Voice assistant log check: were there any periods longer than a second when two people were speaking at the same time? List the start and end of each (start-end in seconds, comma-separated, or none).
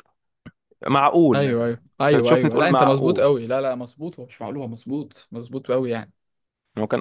1.3-3.3